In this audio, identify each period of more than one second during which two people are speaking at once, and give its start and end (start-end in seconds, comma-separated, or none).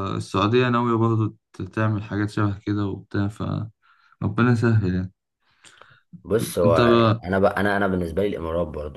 none